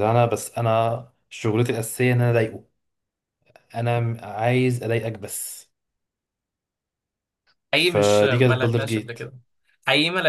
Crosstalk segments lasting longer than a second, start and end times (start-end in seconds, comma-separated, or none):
7.7-9.2